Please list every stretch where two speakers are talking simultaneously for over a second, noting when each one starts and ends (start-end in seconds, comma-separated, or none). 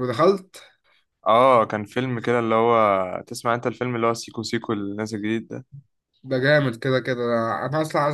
none